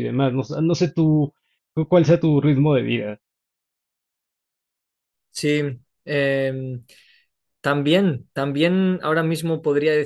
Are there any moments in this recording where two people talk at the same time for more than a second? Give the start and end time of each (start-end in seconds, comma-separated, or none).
none